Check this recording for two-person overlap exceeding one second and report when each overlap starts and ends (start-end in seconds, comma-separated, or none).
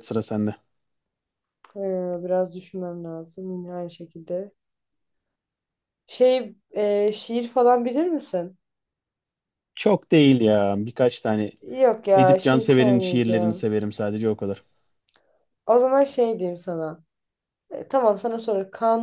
12.2-13.7